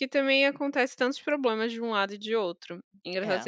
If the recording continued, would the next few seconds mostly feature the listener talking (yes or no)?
no